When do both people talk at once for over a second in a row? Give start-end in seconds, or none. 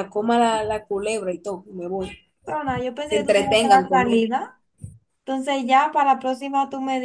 3.0-4.3